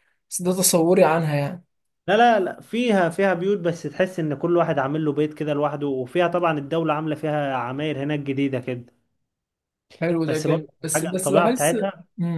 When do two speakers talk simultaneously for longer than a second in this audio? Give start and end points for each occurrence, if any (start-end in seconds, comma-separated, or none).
10.3-11.8